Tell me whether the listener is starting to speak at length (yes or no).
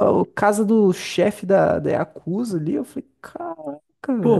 yes